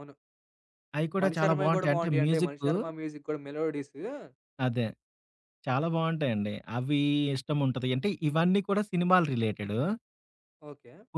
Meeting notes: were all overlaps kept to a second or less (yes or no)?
no